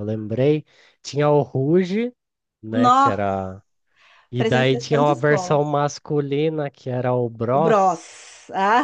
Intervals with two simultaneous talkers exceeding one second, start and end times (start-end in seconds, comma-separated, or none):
4.4-5.6